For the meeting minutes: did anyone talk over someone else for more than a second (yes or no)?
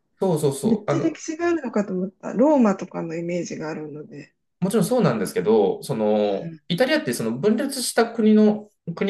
no